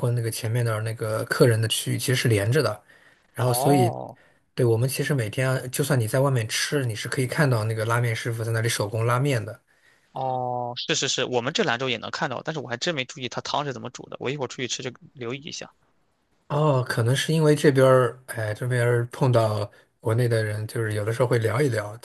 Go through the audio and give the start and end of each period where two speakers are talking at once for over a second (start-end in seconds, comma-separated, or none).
none